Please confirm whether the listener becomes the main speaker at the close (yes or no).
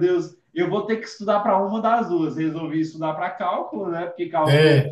no